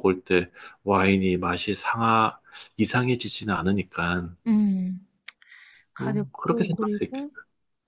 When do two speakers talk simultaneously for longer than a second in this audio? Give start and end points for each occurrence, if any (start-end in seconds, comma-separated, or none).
6.0-7.3